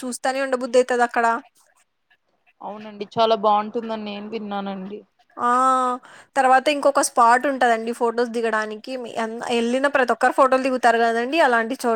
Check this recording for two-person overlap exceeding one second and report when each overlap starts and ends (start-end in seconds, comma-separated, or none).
none